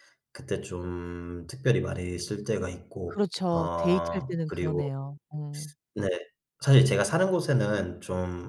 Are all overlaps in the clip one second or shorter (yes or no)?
no